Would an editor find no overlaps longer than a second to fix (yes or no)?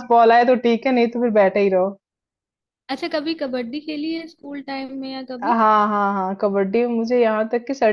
yes